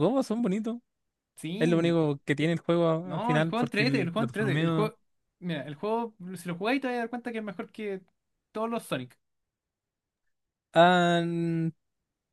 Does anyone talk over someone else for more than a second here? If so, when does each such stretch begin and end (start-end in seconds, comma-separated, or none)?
3.0-4.9